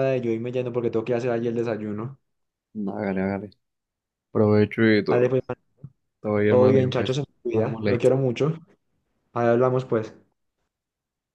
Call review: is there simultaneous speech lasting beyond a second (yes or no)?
yes